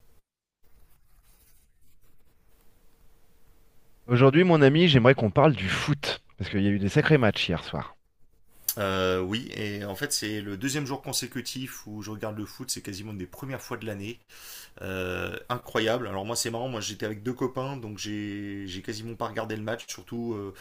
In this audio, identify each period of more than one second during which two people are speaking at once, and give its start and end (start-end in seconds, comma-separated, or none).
none